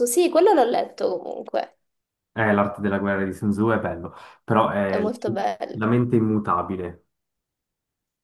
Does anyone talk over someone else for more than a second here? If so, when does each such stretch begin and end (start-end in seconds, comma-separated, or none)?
none